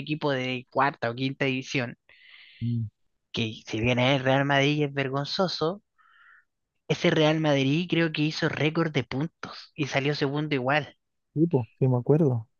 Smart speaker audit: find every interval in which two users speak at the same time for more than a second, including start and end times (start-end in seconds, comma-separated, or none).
none